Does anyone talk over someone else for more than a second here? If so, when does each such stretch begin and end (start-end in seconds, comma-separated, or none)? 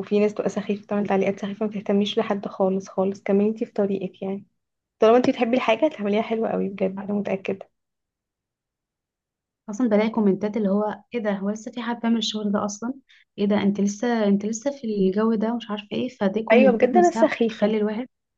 16.5-17.7